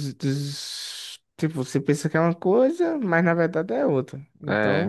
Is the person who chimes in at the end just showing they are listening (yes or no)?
no